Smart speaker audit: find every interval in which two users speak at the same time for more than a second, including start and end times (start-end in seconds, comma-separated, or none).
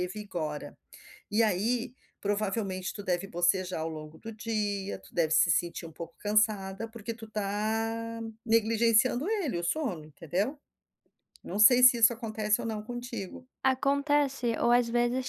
none